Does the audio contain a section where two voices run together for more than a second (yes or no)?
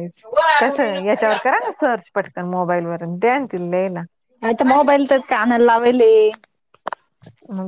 no